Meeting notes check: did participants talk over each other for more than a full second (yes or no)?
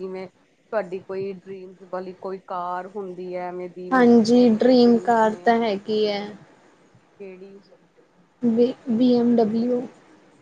yes